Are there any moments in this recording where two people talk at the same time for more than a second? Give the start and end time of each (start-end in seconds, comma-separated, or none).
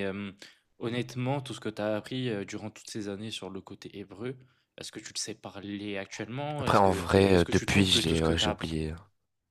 6.6-8.6